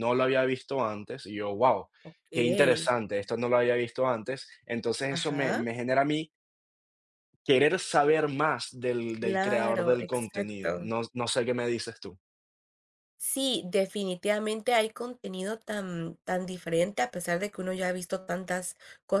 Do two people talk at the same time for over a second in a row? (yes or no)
yes